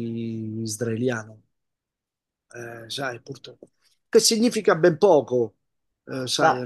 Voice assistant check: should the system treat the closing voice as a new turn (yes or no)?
no